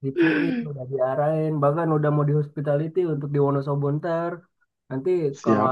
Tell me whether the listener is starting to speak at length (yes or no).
no